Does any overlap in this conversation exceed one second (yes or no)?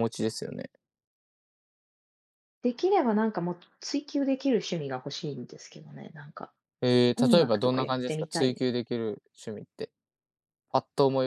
yes